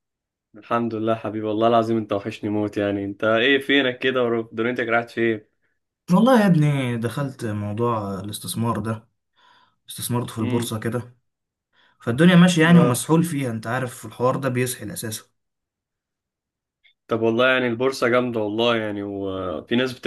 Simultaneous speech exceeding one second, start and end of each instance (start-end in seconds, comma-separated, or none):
none